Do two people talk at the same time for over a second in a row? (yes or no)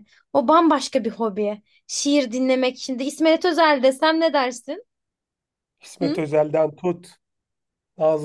no